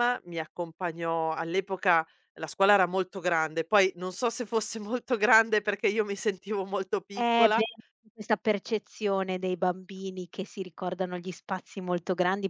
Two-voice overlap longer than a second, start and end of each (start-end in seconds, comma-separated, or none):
none